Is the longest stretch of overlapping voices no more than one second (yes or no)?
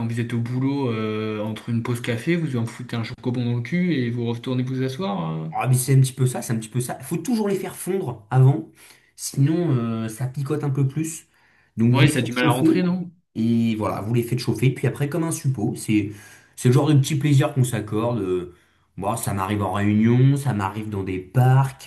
no